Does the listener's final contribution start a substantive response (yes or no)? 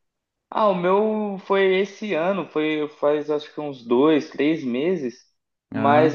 no